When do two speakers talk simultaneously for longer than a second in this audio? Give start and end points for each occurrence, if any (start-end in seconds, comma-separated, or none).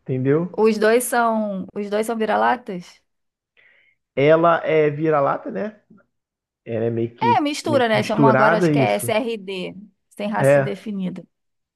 7.2-9.1